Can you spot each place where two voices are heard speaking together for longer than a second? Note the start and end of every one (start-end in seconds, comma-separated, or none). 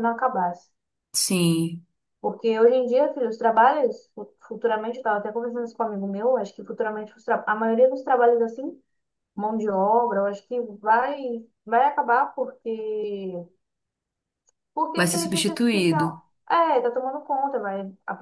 14.9-16.2